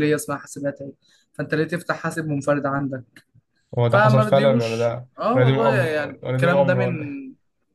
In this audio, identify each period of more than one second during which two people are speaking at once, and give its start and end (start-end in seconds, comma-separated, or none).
3.9-6.9